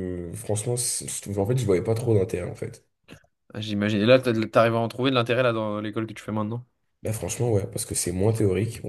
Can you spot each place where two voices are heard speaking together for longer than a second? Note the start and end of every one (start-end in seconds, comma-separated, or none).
none